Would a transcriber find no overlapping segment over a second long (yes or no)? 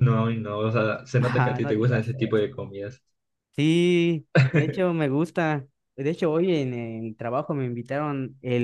no